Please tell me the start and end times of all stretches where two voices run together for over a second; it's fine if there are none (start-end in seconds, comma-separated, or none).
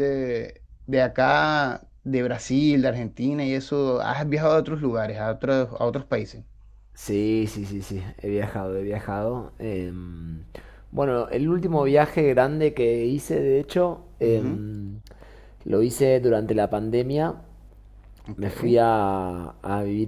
none